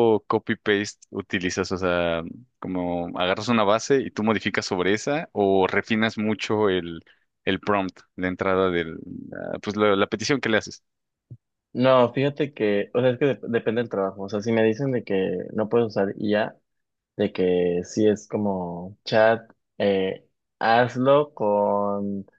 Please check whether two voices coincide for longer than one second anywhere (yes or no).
no